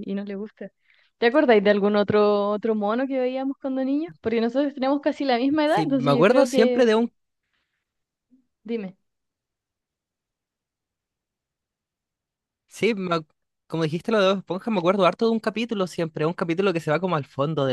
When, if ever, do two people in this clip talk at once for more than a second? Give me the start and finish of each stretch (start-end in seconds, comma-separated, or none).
5.6-6.9